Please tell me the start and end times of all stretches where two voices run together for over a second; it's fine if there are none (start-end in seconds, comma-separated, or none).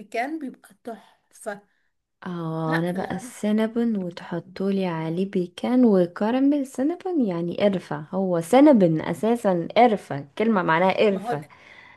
none